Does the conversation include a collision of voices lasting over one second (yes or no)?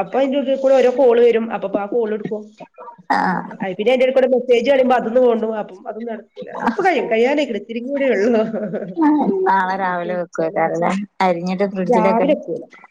no